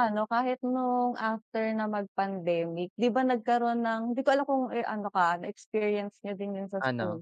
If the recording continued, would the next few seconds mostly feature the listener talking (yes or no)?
no